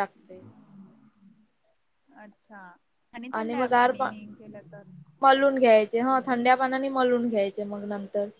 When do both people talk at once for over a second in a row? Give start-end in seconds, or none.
none